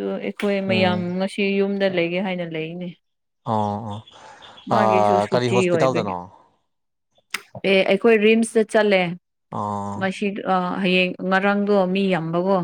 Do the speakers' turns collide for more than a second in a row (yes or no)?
yes